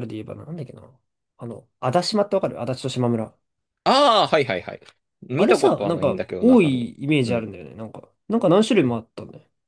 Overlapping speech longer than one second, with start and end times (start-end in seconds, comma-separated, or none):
5.4-7.6